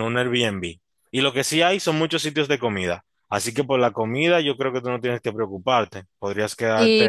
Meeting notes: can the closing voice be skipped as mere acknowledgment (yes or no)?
no